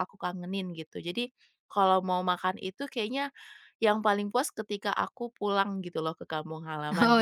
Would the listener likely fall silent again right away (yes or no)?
no